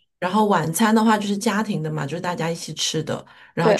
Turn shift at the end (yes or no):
no